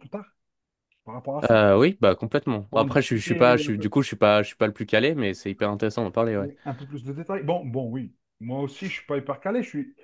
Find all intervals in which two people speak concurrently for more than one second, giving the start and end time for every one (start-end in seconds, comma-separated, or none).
2.7-3.9